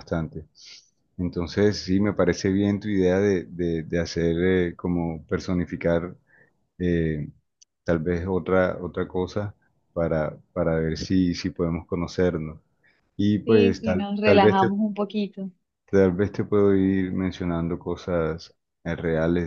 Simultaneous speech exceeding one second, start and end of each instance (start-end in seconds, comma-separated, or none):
13.4-14.7